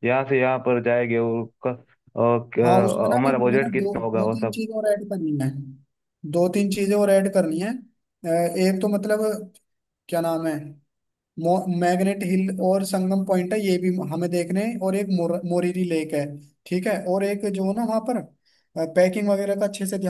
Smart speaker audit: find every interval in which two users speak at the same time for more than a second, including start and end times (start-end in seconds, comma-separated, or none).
2.6-4.6